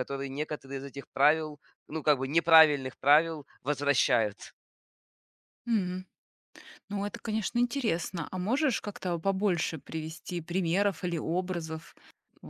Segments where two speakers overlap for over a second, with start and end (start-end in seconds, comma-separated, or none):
none